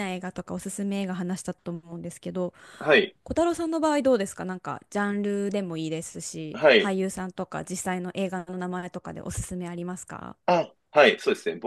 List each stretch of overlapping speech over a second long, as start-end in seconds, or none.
none